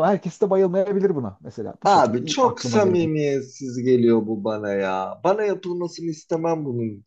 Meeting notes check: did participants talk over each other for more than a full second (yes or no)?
yes